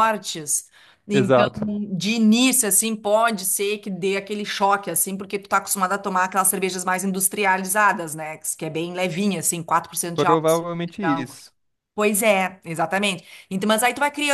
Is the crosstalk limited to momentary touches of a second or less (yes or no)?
no